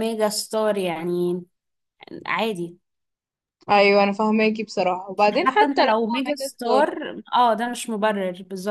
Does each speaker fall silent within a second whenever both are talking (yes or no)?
no